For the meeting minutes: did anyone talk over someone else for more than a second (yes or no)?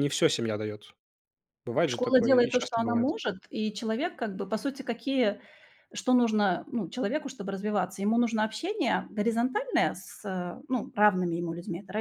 yes